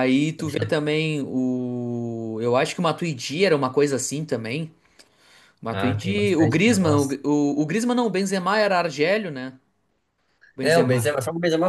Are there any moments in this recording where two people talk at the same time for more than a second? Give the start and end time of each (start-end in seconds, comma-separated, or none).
5.7-7.2